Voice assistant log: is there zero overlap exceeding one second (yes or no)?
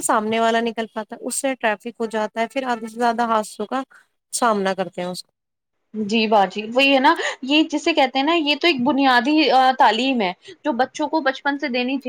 yes